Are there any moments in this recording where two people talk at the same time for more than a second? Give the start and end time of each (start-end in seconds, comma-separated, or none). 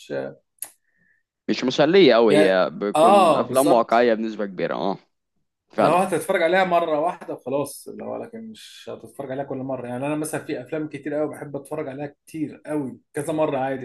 2.3-3.9